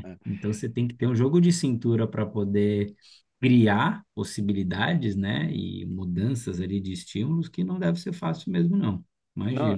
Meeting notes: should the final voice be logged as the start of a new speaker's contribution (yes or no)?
yes